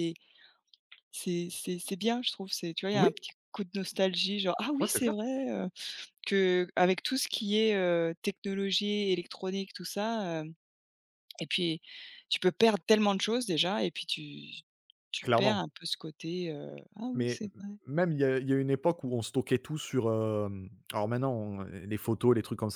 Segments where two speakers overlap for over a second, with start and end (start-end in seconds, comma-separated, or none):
none